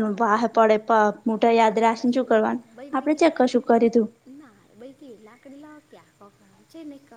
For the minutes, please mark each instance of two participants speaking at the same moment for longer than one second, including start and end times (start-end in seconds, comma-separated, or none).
1.4-4.1